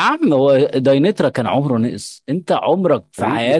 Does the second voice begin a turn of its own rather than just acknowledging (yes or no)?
yes